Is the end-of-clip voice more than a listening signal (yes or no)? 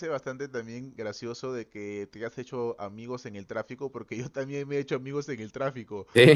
no